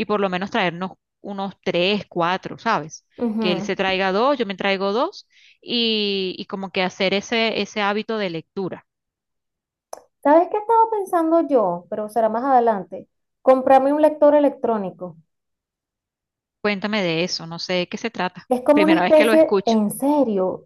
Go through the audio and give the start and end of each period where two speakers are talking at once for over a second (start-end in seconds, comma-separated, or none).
18.5-19.8